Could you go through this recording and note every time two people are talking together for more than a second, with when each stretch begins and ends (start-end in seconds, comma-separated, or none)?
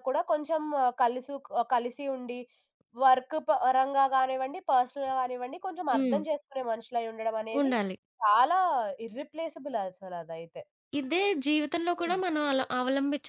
none